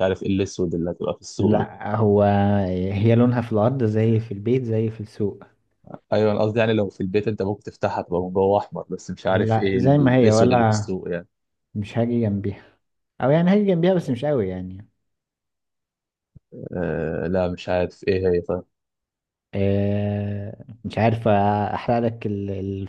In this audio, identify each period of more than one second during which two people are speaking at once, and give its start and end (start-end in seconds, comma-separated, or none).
9.3-10.9